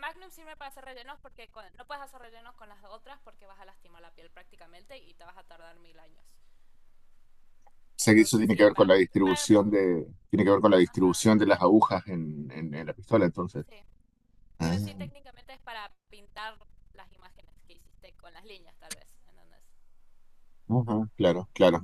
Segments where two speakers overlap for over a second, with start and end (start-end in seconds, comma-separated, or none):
8.0-9.5